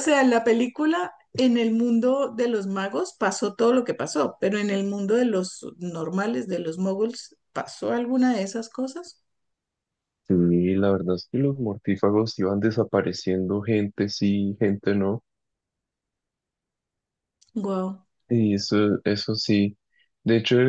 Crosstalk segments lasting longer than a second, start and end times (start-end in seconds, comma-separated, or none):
none